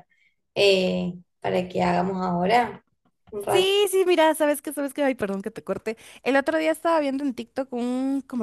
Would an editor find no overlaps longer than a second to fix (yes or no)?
yes